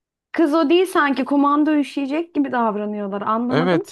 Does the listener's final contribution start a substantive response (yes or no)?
yes